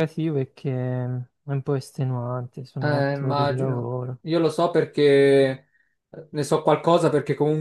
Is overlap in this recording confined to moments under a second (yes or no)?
no